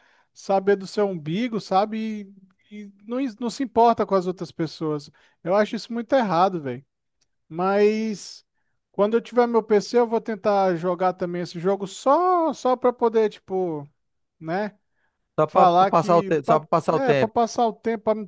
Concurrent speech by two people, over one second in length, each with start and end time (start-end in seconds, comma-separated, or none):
15.5-17.3